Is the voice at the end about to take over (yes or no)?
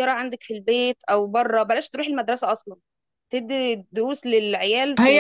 yes